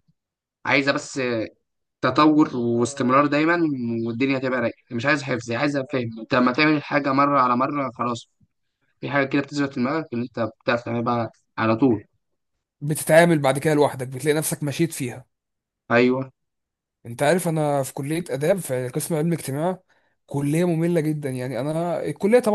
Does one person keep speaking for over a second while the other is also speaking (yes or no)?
no